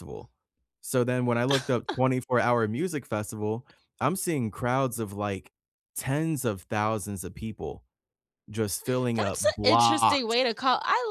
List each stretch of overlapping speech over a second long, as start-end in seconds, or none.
9.2-10.3